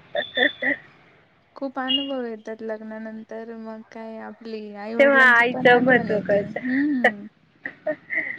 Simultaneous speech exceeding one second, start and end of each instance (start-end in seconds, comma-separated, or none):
5.0-6.6